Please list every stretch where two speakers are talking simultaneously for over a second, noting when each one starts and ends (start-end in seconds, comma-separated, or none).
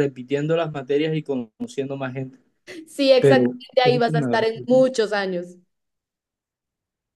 3.2-4.6